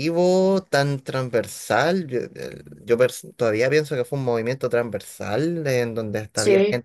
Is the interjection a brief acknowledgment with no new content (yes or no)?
yes